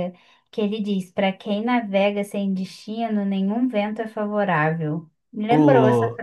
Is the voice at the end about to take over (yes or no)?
yes